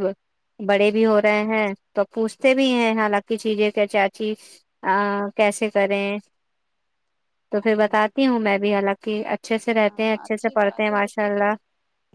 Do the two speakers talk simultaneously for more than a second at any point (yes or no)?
yes